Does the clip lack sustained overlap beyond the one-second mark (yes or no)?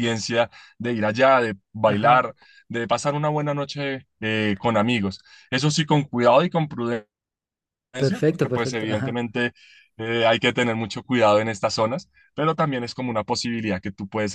no